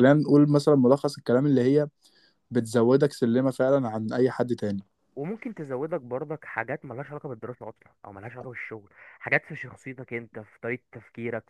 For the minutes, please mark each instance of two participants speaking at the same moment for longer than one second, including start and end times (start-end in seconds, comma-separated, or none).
none